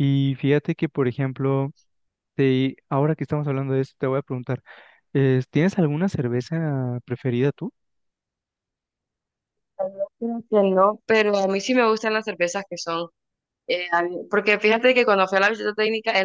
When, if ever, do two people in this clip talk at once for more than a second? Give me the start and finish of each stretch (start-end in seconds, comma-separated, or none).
none